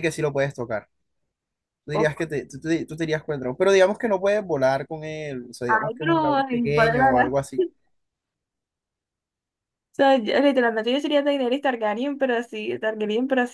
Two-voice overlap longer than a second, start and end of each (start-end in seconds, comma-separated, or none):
5.7-7.4